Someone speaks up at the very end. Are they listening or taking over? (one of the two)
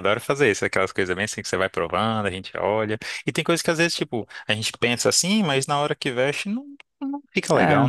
taking over